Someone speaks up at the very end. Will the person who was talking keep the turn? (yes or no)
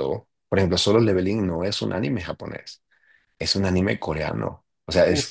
yes